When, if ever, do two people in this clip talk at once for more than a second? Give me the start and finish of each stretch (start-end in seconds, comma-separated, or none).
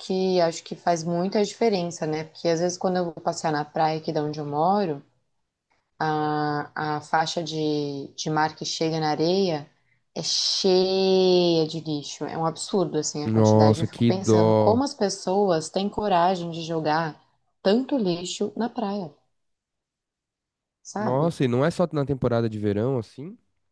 13.2-14.8